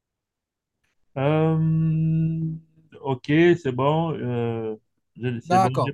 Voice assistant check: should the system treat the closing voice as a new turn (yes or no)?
yes